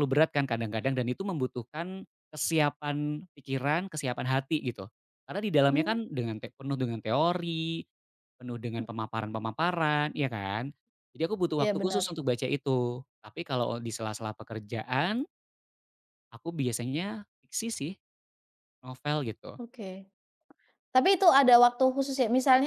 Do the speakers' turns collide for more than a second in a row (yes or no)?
no